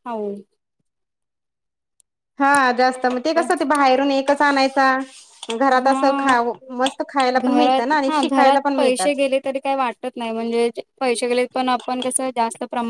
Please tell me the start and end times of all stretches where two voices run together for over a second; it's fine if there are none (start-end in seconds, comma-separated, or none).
7.4-9.2